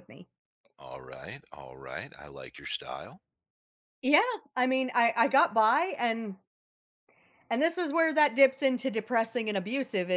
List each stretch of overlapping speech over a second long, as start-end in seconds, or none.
none